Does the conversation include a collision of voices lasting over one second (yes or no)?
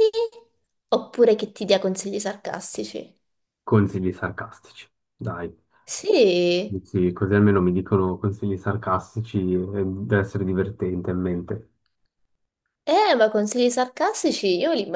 no